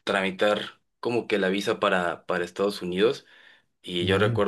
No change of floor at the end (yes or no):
yes